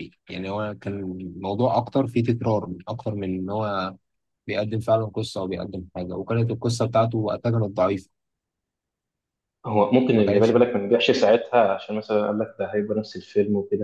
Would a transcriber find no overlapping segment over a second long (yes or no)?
yes